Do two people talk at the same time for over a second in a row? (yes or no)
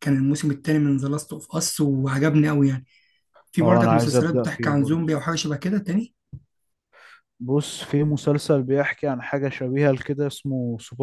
yes